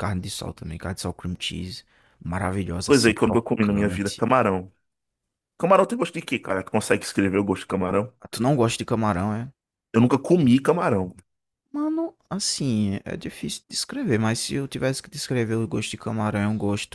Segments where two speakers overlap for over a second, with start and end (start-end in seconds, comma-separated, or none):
2.8-4.2